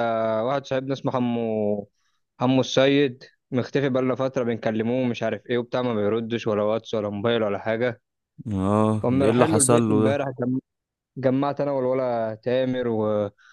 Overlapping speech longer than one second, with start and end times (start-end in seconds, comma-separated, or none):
9.0-10.3